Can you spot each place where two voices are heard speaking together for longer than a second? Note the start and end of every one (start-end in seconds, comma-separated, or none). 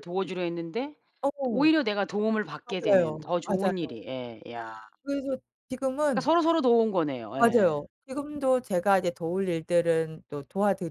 2.6-4.0